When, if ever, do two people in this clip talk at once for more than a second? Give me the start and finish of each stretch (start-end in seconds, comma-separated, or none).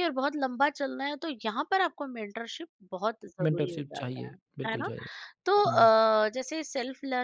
3.4-4.9